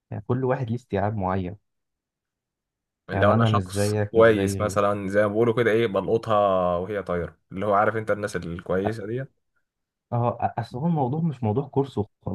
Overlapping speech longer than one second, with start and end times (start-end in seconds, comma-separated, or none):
3.1-4.8